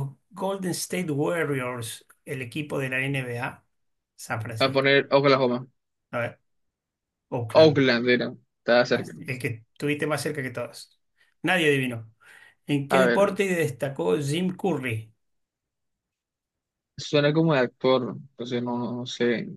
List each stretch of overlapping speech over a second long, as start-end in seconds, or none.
none